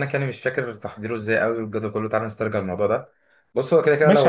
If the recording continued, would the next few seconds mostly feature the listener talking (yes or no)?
yes